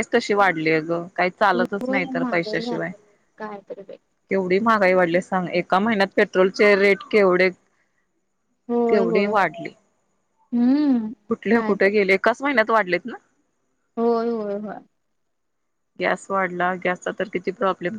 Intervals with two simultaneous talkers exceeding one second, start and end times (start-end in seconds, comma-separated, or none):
1.5-2.9